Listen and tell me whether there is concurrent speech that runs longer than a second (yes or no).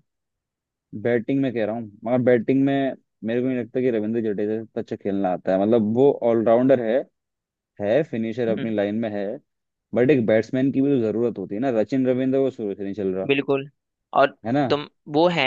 no